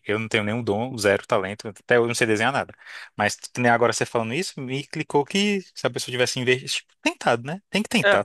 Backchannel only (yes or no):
no